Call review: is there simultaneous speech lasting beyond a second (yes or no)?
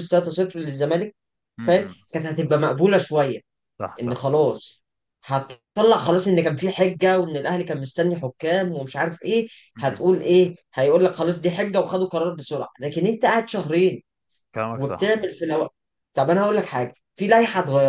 no